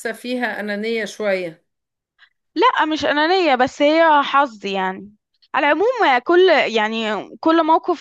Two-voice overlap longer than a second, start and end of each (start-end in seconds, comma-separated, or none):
none